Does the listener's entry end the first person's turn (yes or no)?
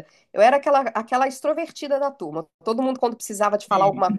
no